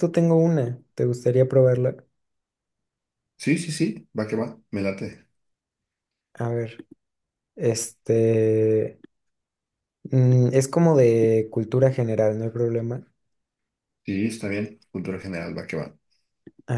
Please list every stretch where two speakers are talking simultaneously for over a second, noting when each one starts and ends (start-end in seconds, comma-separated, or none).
none